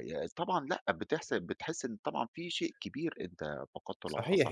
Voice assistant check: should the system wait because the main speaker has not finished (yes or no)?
no